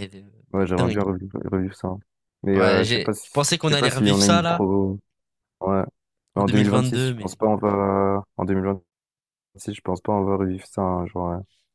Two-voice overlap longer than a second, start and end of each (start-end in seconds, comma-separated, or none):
2.5-4.7, 6.3-7.8